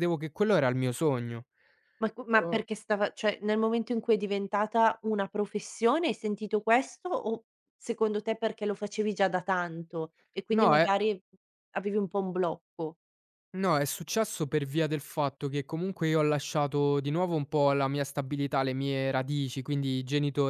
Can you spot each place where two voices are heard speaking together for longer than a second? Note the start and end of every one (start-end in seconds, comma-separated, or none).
none